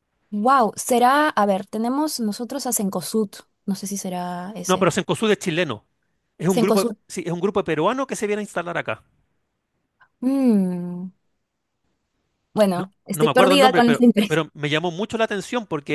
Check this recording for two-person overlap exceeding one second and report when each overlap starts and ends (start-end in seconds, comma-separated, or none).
12.7-14.4